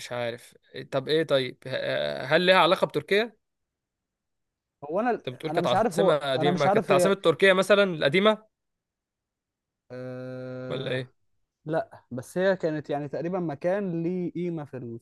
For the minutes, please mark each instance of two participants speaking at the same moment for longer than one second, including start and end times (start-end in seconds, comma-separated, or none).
5.2-7.2